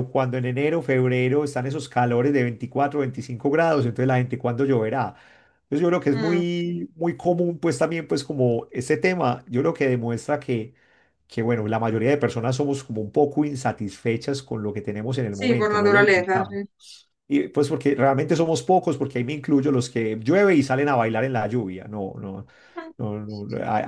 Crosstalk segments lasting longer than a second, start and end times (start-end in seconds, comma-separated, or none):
15.3-16.6